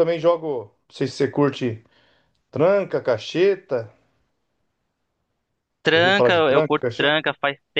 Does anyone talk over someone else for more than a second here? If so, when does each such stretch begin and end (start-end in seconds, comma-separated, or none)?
5.9-7.2